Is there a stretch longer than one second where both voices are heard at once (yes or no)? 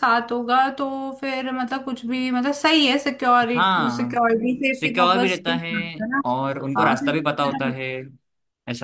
yes